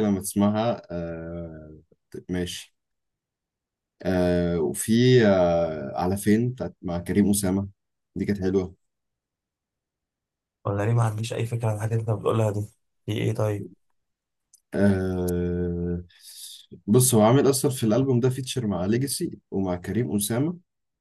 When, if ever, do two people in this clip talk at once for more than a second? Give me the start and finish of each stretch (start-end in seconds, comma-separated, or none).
none